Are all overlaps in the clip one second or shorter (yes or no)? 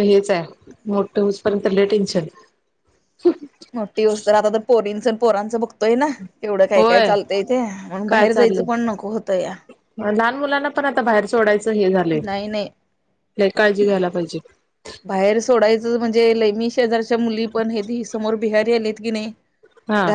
yes